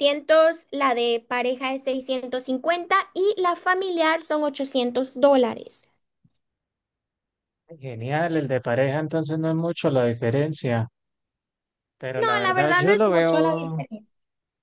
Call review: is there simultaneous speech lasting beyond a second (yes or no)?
yes